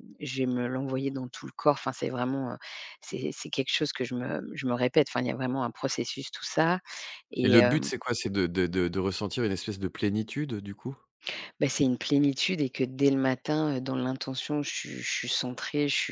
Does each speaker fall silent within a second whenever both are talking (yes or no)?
yes